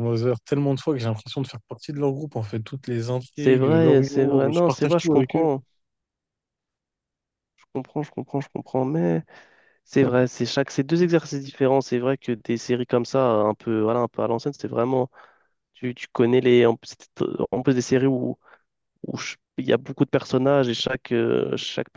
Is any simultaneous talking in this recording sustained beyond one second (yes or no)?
yes